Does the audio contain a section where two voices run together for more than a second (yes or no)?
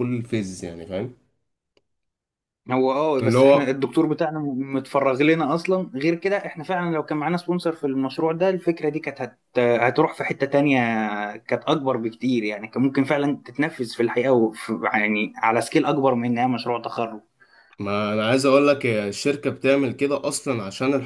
no